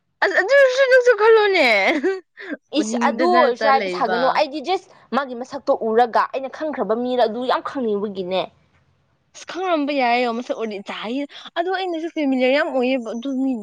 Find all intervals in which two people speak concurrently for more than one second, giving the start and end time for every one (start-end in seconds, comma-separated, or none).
2.8-4.2